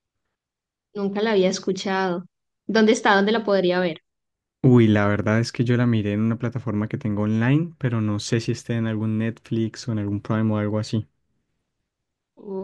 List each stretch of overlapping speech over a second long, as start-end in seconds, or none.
none